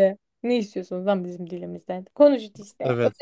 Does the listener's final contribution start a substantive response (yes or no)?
yes